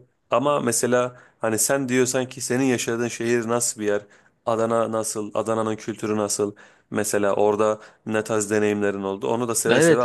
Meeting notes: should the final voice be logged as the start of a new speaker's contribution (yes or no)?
yes